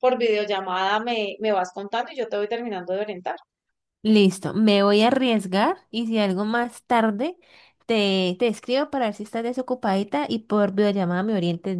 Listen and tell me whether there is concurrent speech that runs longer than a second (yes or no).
no